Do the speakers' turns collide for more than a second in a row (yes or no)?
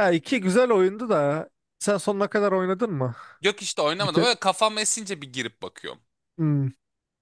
no